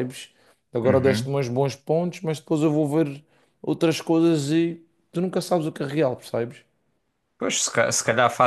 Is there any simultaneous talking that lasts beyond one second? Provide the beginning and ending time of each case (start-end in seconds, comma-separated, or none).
none